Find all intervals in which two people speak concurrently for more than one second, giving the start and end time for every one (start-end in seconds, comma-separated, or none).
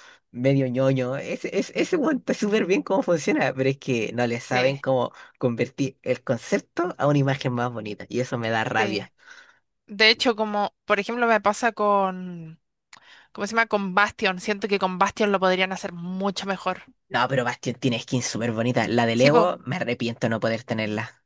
none